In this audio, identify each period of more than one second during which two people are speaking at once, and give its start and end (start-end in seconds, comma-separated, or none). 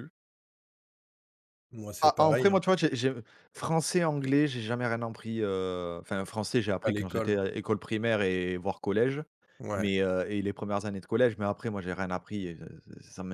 none